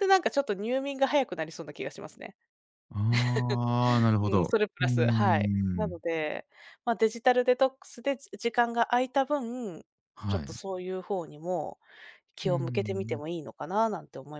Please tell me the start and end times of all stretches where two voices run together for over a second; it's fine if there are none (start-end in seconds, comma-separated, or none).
4.2-6.0